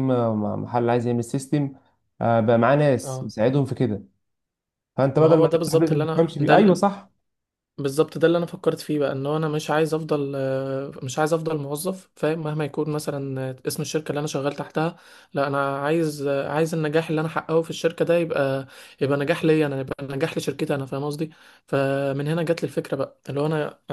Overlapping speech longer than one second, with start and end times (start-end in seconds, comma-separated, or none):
5.2-6.8